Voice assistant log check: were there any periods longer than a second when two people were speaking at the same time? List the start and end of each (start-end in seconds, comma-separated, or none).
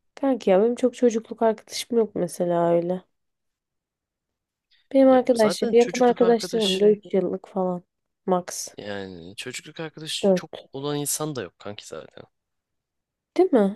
5.1-7.0